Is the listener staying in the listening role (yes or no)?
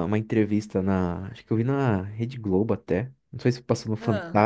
yes